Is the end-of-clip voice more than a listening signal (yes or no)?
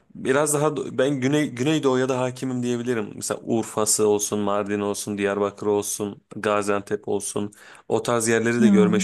no